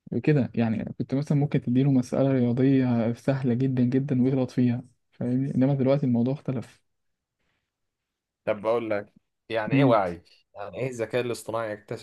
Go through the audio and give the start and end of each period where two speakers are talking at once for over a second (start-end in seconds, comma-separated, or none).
none